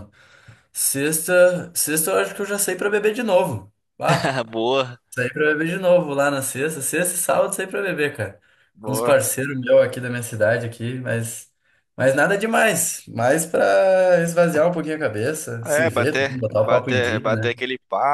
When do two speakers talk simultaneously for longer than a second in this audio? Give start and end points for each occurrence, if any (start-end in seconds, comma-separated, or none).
15.6-17.5